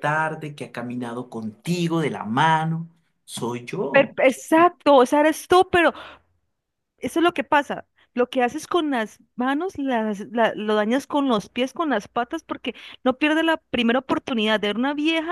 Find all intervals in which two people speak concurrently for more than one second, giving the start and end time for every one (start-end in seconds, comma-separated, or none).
none